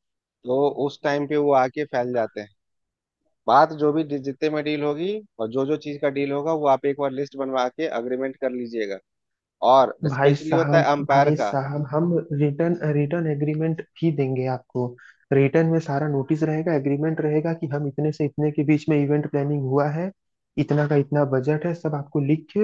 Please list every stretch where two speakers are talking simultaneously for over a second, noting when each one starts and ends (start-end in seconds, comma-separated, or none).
10.1-11.6